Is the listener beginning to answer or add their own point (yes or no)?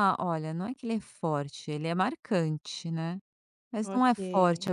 no